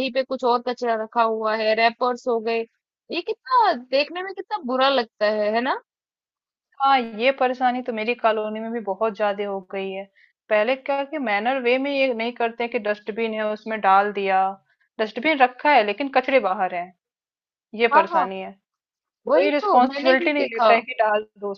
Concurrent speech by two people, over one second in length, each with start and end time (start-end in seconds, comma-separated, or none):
19.3-20.7